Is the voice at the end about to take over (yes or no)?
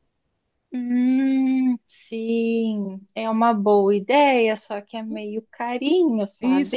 yes